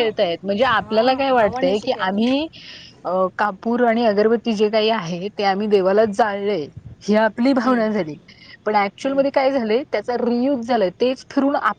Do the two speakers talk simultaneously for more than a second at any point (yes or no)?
yes